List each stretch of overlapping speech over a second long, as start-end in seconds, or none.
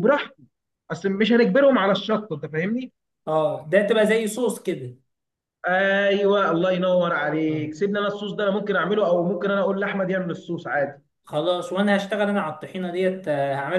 none